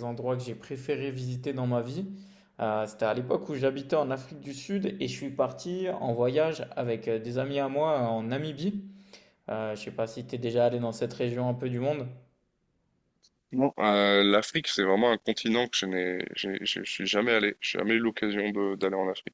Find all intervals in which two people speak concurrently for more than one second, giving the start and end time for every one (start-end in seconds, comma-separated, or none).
none